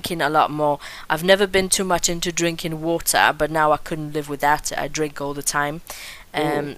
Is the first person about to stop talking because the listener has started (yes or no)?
no